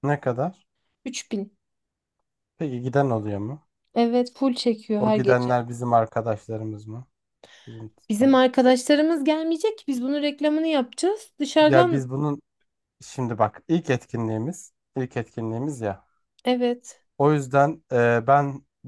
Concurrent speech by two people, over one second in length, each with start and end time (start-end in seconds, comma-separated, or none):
none